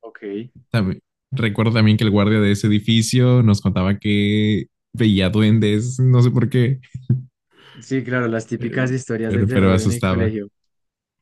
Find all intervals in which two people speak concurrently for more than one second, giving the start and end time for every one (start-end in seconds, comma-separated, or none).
8.6-10.3